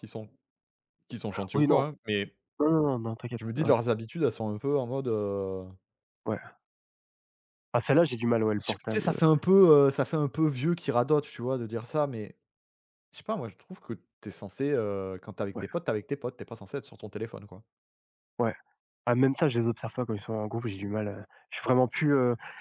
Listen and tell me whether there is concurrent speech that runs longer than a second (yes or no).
no